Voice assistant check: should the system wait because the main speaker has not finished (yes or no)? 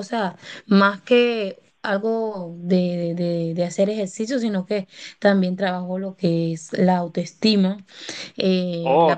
no